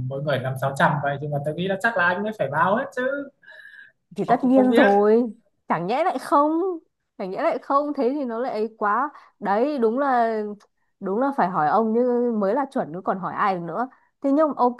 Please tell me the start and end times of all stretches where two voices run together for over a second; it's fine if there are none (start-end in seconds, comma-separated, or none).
none